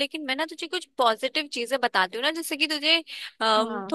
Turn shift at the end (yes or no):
no